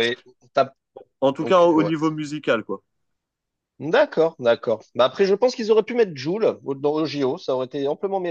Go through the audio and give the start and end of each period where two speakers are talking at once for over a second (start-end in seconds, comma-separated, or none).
none